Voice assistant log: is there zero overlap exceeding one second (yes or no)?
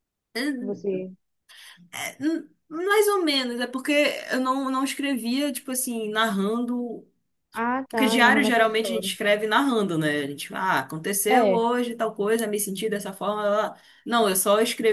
no